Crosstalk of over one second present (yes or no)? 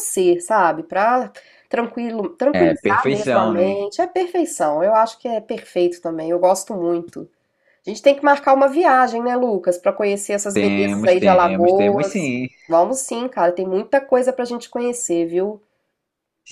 yes